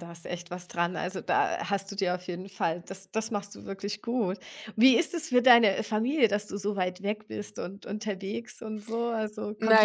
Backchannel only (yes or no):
no